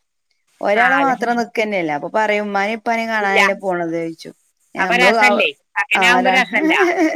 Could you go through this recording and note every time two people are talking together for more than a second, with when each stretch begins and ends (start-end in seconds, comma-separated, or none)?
none